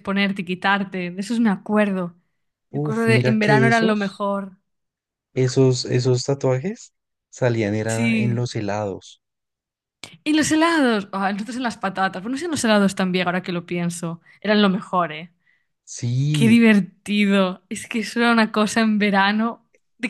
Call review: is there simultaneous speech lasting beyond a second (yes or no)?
yes